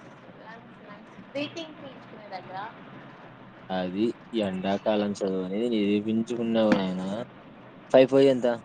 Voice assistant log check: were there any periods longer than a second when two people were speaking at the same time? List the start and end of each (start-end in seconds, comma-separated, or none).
none